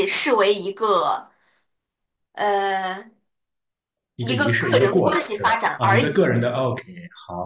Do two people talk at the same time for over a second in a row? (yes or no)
yes